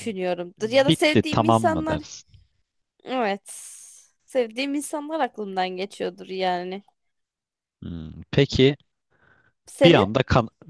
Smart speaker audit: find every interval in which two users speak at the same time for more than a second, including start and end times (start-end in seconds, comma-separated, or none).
0.6-2.0